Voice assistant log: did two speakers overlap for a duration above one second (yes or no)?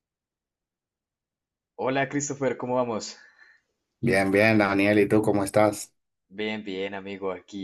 no